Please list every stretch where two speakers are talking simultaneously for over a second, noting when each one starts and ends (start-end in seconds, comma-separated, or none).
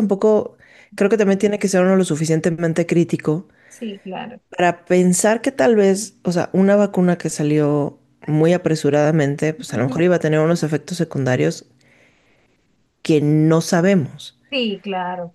none